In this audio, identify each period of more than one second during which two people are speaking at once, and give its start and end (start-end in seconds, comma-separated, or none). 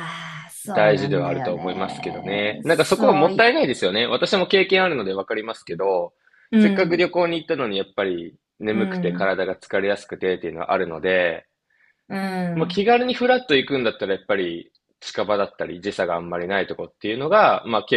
0.7-3.5